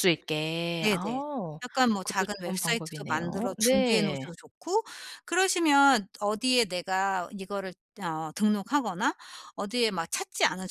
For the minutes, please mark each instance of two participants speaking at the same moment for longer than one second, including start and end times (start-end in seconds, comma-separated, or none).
2.0-4.2